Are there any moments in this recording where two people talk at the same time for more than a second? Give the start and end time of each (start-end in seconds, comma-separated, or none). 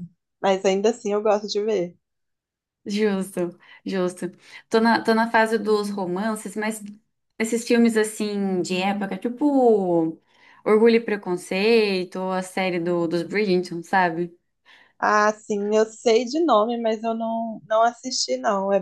none